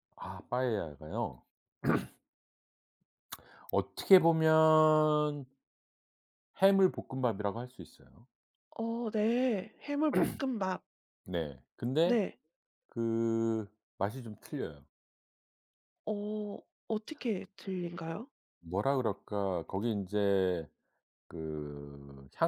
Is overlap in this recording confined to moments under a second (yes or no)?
yes